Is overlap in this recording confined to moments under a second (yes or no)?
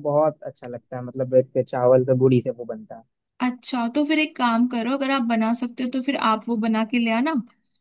yes